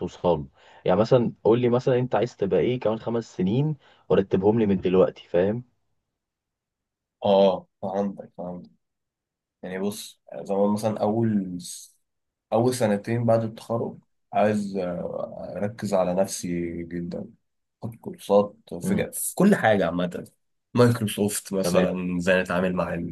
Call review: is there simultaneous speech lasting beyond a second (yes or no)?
no